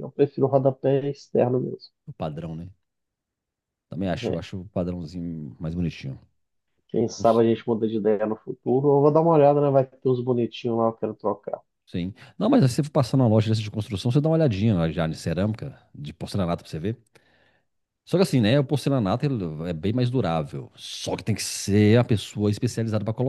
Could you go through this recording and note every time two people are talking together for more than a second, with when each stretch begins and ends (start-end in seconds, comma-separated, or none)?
none